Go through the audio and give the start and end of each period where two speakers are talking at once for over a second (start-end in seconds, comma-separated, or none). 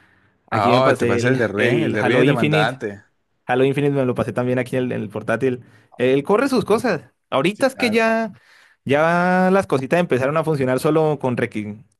0.5-2.8